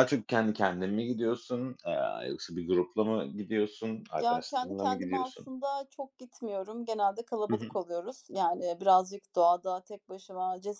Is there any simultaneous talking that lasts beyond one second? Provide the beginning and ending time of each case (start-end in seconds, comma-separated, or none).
4.2-5.5